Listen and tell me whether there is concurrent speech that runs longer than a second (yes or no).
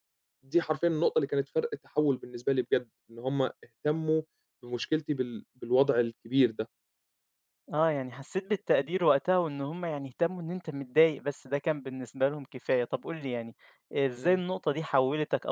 no